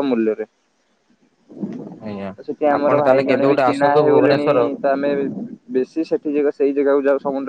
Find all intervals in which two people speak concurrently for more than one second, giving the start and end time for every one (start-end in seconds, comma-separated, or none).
2.8-4.5